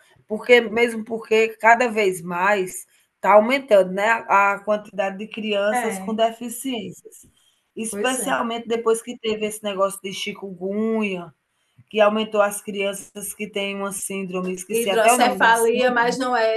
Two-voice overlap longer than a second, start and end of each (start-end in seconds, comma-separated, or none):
14.7-15.9